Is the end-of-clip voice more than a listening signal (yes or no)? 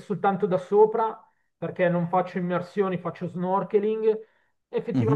no